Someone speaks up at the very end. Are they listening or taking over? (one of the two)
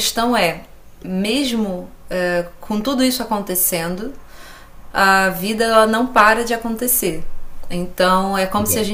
listening